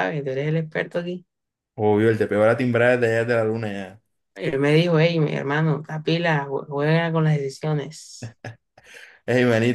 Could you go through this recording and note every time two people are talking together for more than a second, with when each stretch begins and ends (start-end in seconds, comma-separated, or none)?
none